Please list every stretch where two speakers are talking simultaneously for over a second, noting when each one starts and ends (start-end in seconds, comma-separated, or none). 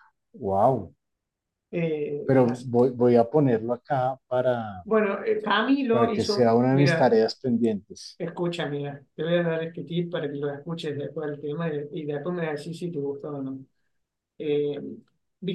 5.9-7.2